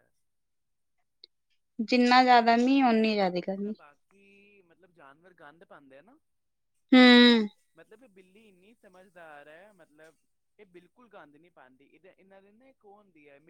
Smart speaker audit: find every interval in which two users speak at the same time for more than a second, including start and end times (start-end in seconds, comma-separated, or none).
2.4-3.7